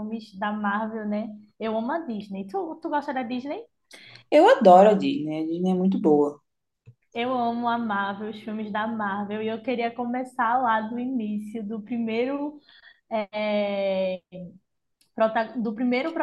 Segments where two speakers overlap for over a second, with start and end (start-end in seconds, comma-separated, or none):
none